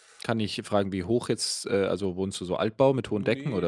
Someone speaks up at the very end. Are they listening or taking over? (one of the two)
taking over